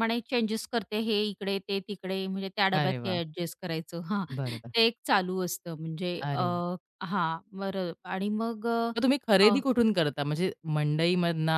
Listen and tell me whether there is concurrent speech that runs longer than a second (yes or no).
no